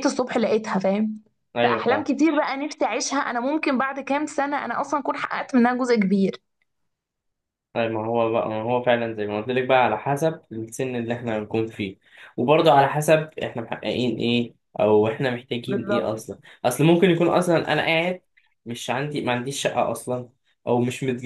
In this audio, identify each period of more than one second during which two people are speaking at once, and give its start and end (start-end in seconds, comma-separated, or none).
none